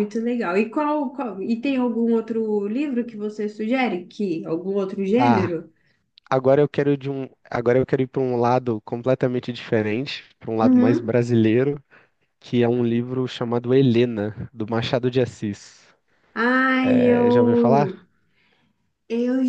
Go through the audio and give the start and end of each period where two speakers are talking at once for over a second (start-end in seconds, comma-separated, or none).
none